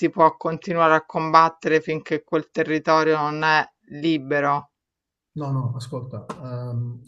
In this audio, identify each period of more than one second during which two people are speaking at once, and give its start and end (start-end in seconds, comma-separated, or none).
none